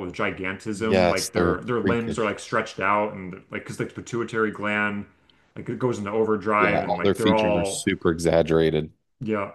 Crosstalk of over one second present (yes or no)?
yes